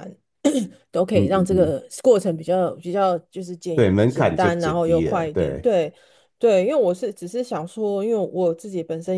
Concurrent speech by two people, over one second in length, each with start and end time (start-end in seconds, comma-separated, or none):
3.7-5.7